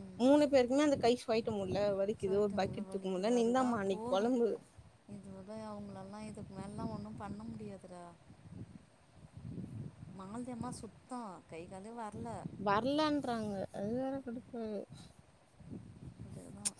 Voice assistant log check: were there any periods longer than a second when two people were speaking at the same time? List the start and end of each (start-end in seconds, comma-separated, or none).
2.2-4.4